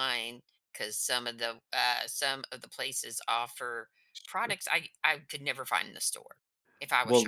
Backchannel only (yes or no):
no